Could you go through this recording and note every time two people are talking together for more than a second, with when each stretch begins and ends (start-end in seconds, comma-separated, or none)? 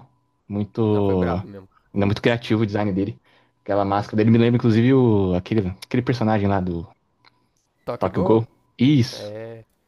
none